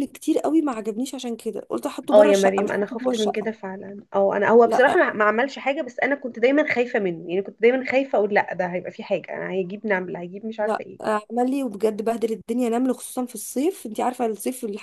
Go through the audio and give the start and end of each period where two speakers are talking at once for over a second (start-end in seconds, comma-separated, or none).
2.1-3.5